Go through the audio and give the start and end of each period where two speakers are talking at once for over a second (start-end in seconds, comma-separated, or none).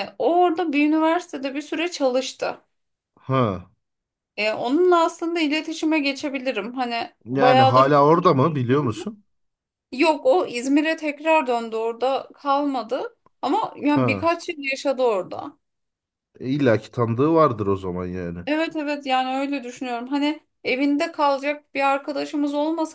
7.2-8.9